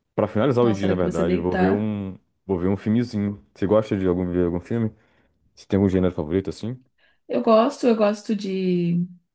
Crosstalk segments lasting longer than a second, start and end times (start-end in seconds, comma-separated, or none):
0.6-1.9